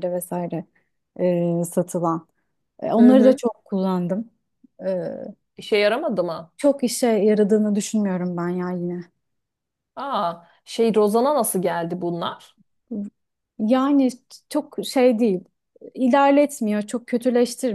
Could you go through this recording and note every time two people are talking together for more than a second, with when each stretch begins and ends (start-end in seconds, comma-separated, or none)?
none